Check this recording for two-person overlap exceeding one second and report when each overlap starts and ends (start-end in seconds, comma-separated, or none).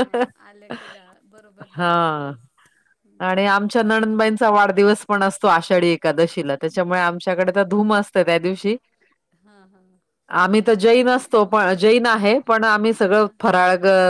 none